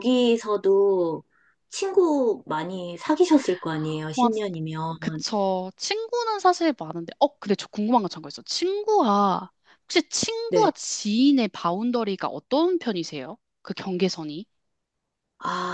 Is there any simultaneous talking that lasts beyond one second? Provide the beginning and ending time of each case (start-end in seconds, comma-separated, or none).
none